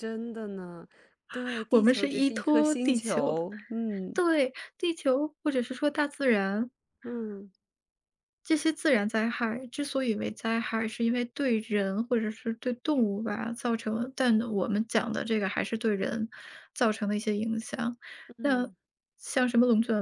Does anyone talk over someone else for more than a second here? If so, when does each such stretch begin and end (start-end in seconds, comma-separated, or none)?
1.7-3.4